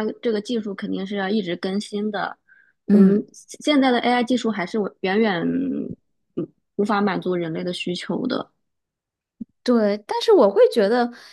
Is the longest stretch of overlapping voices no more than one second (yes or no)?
yes